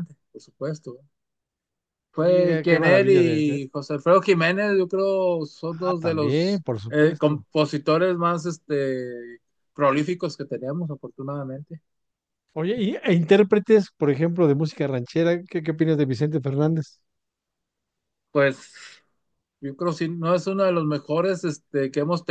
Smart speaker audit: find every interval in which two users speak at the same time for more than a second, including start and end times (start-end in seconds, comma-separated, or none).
2.2-3.6, 5.7-7.4